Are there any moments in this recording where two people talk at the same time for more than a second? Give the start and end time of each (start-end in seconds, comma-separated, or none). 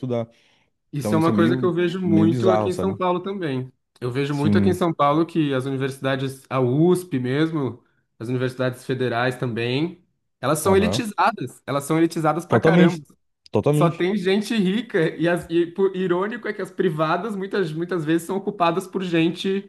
1.0-3.0